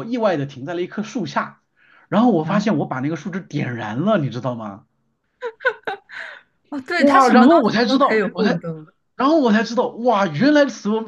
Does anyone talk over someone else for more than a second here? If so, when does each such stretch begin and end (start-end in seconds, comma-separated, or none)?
7.0-8.6